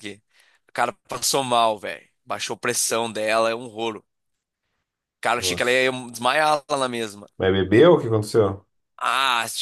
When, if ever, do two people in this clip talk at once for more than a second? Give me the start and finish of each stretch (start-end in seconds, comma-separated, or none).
none